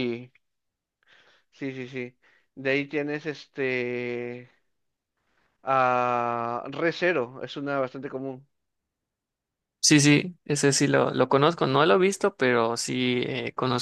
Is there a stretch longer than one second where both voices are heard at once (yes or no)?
no